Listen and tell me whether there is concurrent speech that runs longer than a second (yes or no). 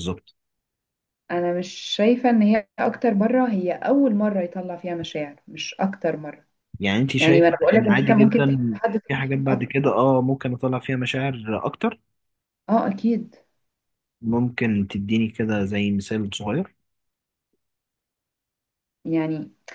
yes